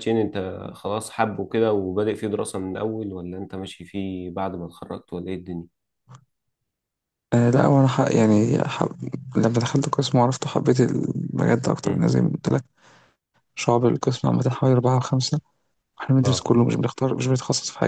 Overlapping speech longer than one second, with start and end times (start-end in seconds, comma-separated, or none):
none